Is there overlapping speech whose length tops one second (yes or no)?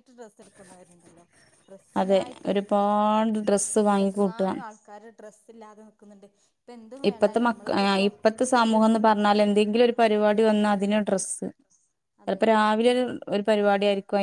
no